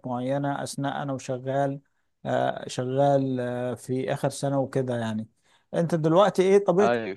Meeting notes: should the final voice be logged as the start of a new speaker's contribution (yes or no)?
no